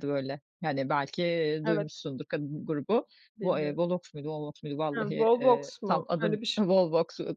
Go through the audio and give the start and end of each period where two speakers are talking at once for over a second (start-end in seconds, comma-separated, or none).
4.9-6.6